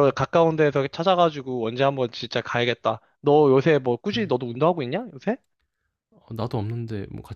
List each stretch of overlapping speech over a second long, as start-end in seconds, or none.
none